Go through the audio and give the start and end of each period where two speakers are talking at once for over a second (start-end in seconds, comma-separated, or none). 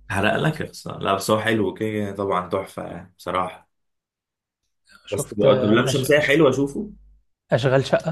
5.1-6.3